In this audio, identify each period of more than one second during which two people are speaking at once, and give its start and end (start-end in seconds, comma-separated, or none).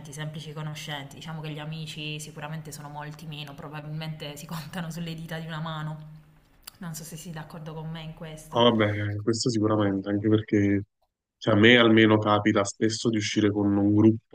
none